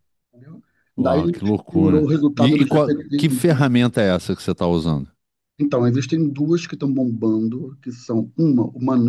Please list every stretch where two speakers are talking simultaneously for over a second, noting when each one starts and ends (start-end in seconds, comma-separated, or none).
1.0-3.6